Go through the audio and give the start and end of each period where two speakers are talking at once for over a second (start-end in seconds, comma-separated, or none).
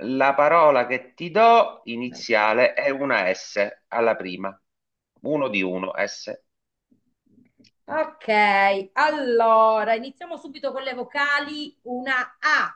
none